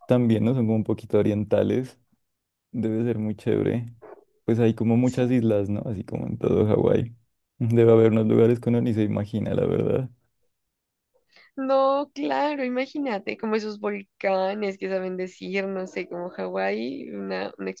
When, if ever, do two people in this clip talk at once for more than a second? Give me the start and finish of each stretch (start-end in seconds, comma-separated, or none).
none